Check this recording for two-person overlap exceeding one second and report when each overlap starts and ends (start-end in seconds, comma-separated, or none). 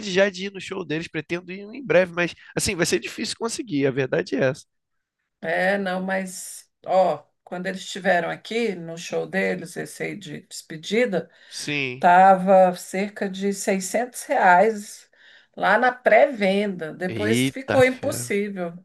17.1-18.3